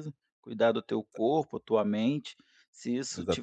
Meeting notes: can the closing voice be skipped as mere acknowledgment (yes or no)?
yes